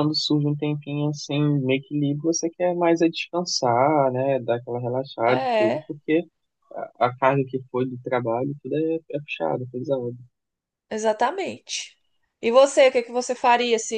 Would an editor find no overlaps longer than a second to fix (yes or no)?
yes